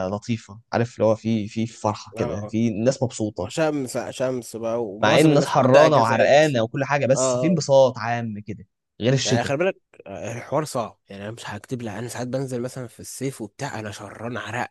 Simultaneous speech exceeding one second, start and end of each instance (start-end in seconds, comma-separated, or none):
5.0-6.5